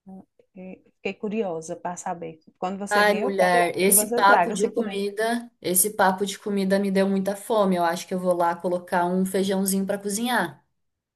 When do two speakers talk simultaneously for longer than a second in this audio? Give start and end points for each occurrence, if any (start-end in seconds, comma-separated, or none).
2.9-5.0